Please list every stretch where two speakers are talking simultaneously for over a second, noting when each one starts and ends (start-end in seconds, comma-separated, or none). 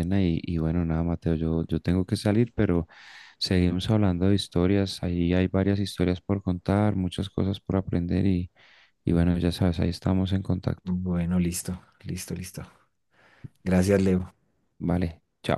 none